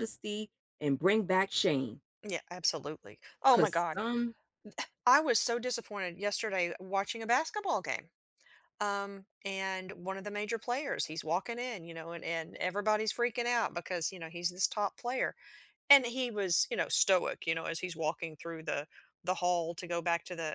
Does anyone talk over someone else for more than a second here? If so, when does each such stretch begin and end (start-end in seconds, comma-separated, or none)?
none